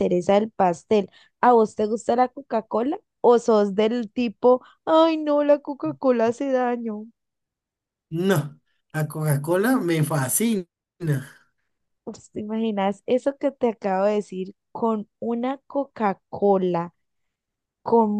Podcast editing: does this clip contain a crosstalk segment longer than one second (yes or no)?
no